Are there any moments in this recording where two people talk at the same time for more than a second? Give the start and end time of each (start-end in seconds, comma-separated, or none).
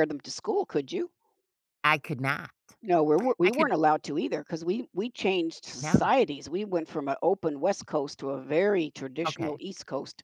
none